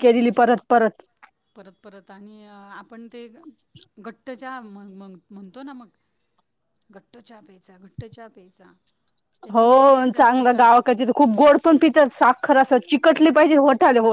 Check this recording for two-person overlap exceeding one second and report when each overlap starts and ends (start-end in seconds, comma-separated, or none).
9.5-10.9